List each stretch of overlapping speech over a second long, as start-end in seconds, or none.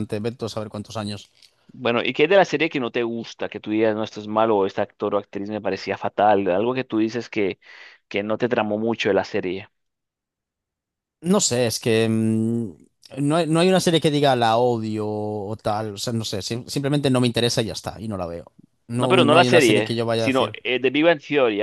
19.0-20.6